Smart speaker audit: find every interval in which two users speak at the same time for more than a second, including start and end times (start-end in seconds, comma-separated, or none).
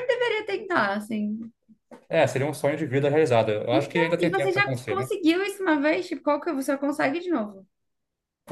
3.7-5.1